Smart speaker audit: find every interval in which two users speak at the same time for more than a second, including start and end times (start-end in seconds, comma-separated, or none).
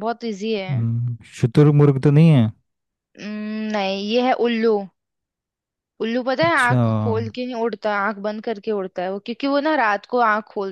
none